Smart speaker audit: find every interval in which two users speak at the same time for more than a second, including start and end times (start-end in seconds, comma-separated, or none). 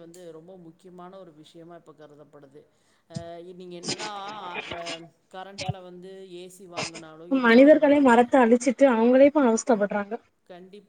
none